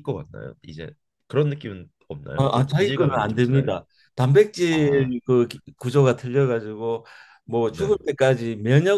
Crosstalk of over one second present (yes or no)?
yes